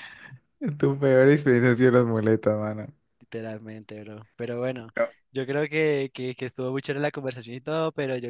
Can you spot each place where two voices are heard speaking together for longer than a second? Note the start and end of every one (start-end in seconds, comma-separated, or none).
none